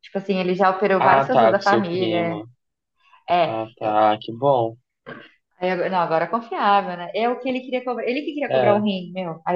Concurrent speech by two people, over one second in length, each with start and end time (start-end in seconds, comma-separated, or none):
1.0-2.4